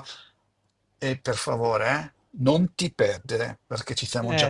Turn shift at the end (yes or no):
yes